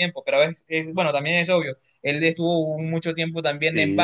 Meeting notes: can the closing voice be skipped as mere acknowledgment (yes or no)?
yes